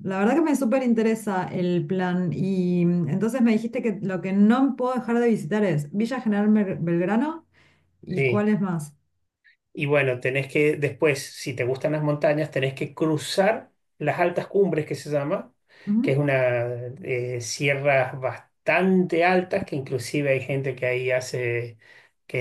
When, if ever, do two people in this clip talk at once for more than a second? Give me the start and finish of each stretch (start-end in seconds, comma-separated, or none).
none